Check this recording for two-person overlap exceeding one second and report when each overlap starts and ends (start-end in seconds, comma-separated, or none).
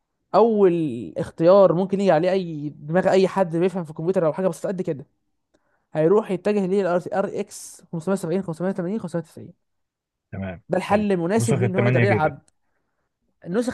10.7-12.3